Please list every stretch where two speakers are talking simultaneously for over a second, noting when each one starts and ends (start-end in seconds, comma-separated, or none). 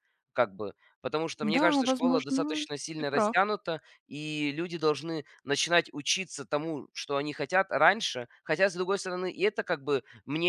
1.4-3.5